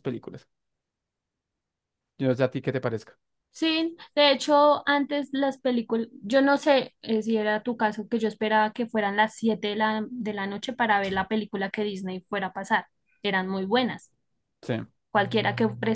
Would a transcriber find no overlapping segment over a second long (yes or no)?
yes